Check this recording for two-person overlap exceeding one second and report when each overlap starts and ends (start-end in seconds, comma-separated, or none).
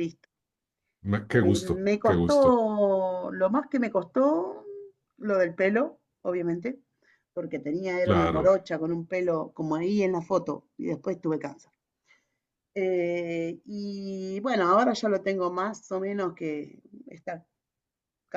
1.3-2.6